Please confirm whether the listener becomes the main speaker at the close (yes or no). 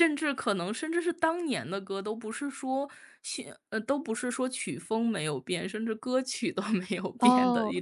yes